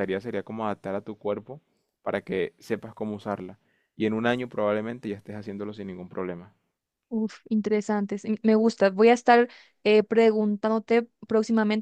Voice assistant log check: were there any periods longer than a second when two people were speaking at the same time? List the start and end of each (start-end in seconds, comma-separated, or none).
none